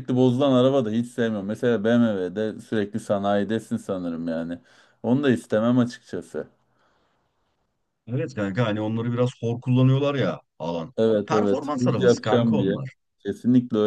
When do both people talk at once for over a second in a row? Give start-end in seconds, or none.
11.0-12.8